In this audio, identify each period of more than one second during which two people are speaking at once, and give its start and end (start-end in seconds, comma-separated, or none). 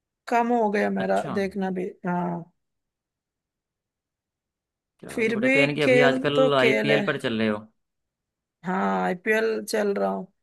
5.1-7.0